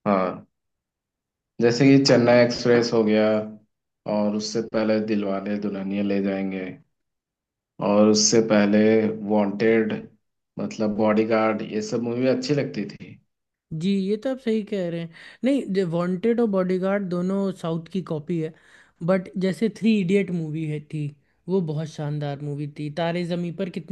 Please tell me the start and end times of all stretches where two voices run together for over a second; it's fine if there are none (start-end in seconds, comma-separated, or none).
none